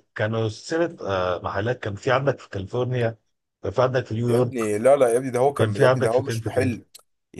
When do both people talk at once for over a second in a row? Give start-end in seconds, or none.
5.4-6.7